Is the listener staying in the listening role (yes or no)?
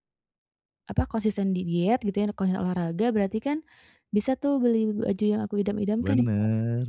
no